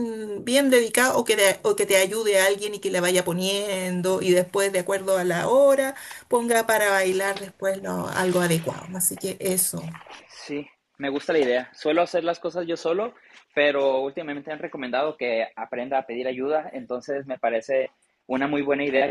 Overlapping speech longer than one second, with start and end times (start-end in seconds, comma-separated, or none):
none